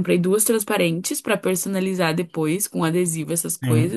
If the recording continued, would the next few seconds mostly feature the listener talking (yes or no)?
no